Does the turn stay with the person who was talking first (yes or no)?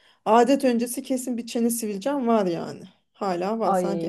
yes